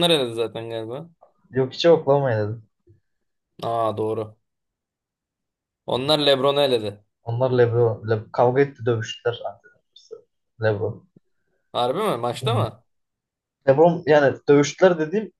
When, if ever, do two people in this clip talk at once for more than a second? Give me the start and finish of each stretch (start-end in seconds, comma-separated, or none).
none